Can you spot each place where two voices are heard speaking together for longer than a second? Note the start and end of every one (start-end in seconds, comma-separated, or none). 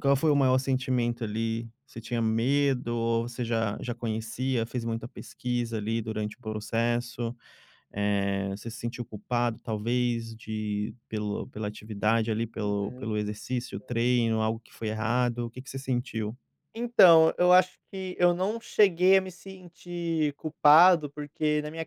none